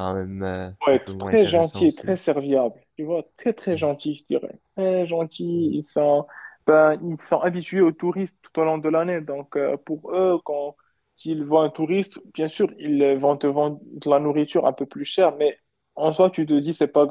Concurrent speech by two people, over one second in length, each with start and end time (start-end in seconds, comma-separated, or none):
0.9-2.1